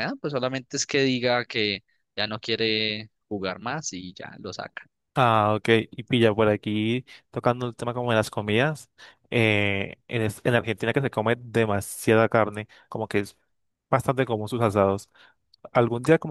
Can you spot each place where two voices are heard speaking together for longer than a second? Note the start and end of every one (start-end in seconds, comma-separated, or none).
none